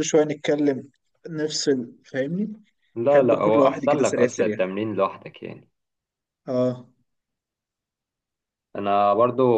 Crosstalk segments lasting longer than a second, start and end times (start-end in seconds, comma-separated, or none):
3.1-4.6